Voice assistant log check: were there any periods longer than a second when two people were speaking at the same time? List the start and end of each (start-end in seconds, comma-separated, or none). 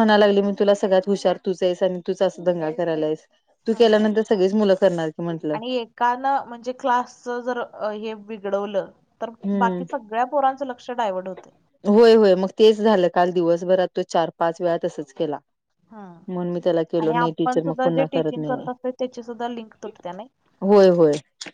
17.0-18.7